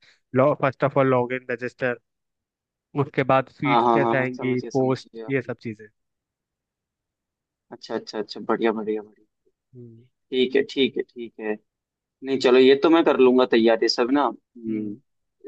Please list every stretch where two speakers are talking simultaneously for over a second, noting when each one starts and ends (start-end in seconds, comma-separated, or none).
3.6-5.3